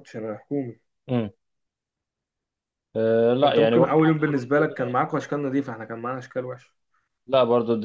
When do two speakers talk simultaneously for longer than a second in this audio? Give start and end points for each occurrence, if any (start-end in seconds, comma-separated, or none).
3.4-4.8